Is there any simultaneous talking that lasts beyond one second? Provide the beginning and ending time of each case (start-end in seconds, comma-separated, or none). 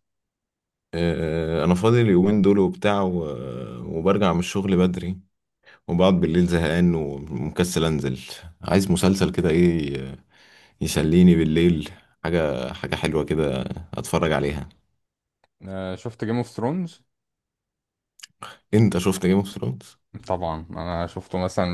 none